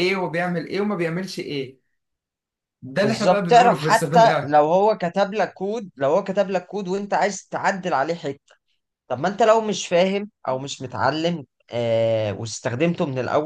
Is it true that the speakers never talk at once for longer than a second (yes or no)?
no